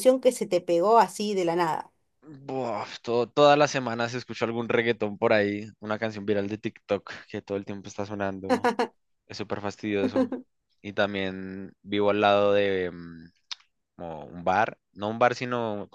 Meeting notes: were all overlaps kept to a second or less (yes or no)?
yes